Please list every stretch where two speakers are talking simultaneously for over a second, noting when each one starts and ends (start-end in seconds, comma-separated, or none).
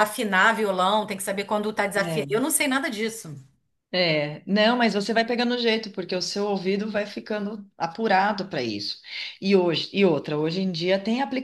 none